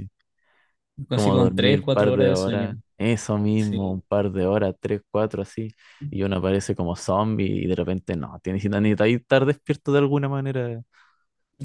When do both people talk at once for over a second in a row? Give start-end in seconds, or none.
1.1-2.7